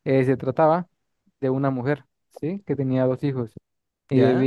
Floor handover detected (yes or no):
no